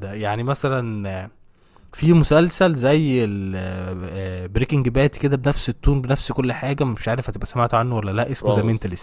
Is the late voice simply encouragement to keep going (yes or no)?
no